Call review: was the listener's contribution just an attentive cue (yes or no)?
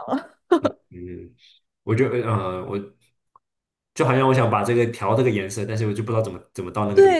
no